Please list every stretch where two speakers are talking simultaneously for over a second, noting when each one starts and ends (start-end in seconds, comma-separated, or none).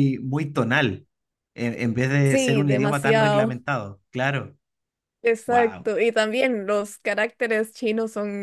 2.2-3.6